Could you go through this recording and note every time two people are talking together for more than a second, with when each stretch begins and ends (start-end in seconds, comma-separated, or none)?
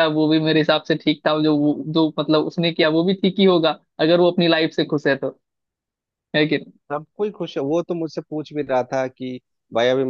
none